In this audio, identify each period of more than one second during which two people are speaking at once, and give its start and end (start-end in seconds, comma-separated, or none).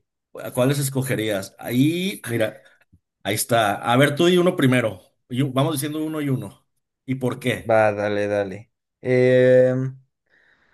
none